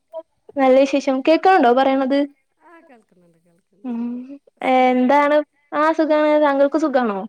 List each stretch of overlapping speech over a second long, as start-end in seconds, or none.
none